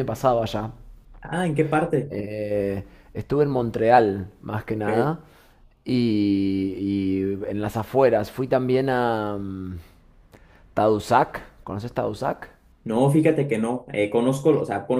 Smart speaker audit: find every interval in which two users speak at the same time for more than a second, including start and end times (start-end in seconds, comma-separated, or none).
none